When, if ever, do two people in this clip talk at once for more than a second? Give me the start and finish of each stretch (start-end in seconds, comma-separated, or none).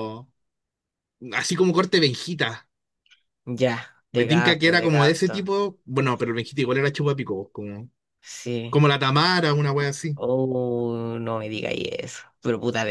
4.1-5.4